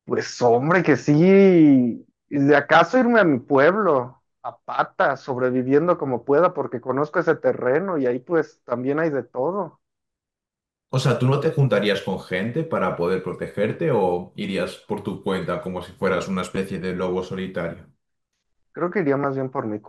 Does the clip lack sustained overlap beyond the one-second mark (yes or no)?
yes